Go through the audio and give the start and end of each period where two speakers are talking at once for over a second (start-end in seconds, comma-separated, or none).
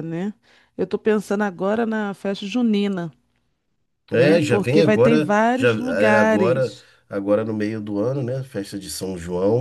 4.1-6.9